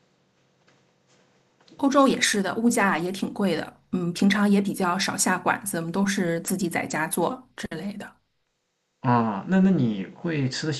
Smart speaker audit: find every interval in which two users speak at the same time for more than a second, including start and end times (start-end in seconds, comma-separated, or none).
none